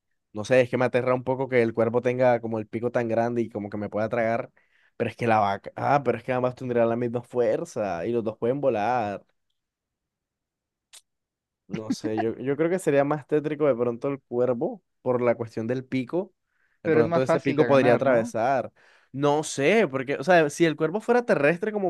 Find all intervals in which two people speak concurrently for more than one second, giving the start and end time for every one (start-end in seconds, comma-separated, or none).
16.8-18.3